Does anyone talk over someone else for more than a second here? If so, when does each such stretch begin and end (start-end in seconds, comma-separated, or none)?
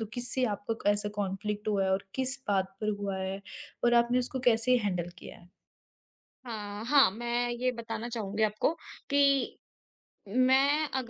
none